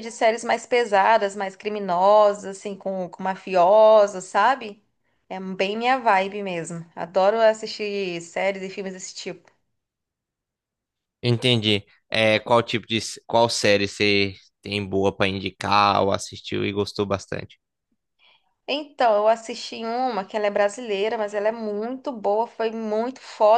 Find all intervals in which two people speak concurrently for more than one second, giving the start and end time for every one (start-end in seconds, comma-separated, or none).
none